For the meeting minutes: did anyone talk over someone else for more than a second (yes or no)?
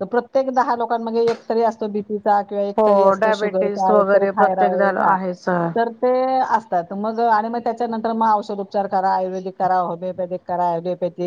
yes